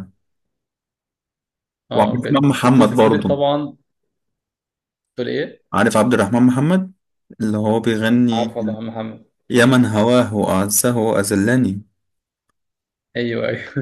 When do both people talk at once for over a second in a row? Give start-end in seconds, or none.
1.9-3.4